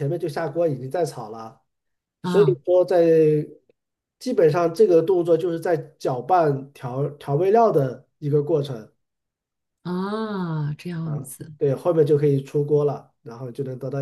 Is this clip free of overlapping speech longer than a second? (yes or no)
yes